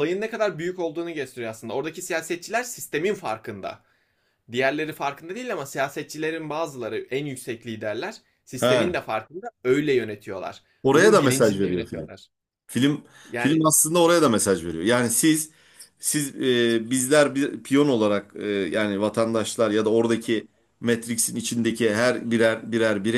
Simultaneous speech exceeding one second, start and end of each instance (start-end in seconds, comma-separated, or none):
10.8-12.1